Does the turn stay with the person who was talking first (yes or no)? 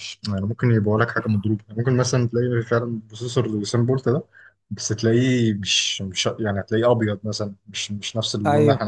no